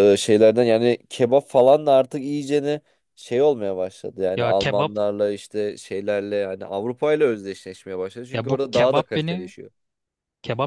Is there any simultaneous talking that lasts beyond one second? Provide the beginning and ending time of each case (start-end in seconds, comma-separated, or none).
8.3-9.5